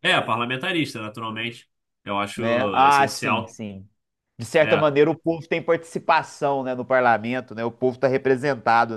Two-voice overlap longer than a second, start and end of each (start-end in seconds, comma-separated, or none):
2.4-3.6